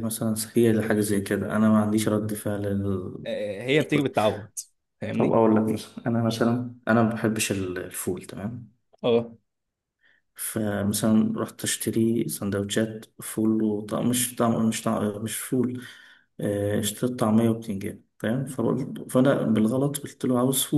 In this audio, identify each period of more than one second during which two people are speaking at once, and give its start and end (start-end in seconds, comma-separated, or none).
none